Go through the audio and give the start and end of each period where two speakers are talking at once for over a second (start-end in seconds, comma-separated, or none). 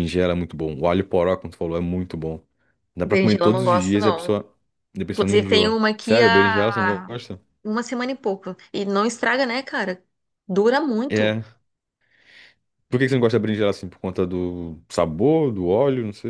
3.0-4.3, 5.1-7.1